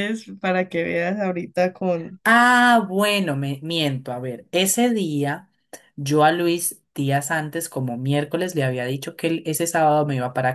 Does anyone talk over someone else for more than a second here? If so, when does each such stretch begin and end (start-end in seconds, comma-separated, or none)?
none